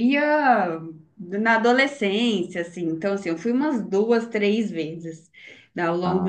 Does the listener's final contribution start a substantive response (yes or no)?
no